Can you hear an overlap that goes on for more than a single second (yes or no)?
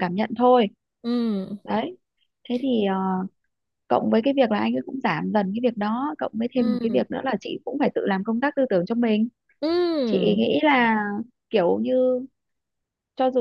no